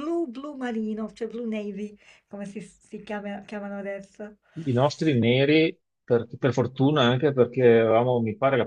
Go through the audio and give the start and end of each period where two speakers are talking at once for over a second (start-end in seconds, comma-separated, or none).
none